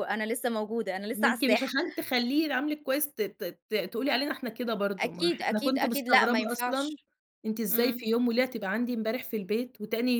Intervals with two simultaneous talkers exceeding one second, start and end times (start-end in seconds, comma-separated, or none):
5.0-7.0